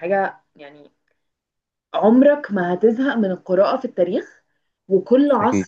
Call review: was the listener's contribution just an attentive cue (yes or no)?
yes